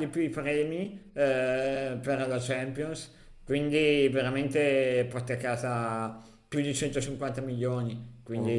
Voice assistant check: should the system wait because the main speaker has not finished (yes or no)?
yes